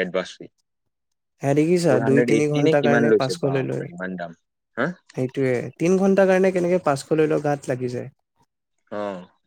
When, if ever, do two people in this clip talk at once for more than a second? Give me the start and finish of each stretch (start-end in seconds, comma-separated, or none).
1.9-3.8